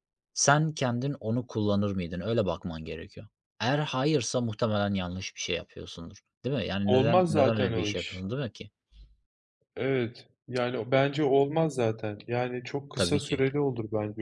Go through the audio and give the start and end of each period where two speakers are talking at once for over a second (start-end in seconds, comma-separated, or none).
6.8-8.2